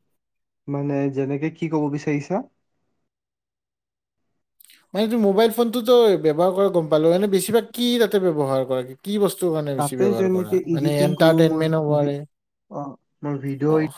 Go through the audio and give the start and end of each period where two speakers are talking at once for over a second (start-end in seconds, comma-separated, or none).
9.8-12.1